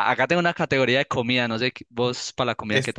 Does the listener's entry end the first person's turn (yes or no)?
yes